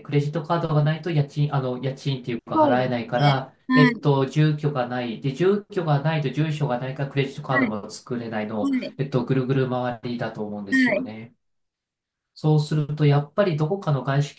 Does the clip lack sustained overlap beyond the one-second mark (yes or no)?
no